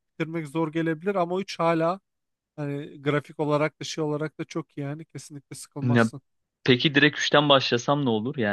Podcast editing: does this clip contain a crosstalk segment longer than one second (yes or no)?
no